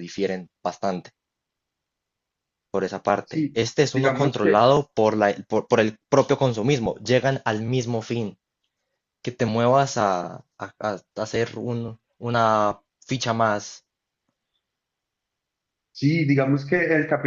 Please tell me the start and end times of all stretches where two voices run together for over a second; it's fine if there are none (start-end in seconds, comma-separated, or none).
3.2-4.7